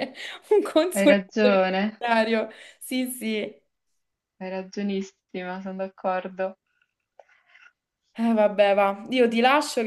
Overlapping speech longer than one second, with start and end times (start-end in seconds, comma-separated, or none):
none